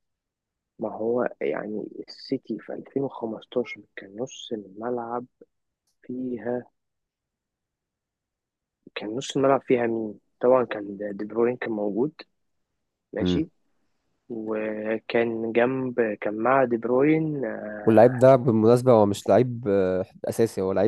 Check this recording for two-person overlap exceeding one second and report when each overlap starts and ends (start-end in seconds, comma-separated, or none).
none